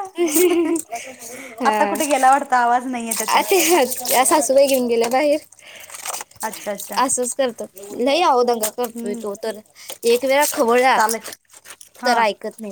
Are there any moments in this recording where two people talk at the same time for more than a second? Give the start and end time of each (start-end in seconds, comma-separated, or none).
none